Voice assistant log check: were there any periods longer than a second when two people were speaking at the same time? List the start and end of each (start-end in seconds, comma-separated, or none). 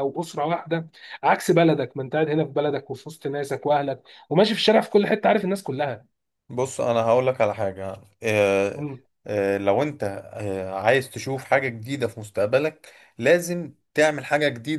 none